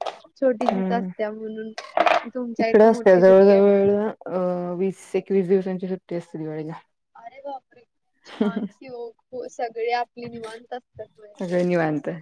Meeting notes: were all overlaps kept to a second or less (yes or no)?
no